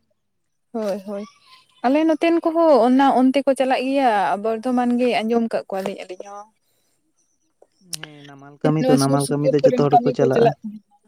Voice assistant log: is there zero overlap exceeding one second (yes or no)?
no